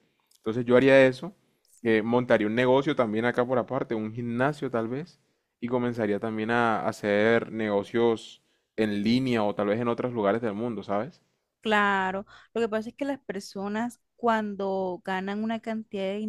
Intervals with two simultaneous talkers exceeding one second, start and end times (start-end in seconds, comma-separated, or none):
none